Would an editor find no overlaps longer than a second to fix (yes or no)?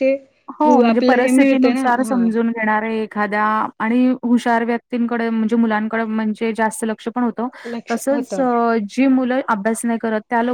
no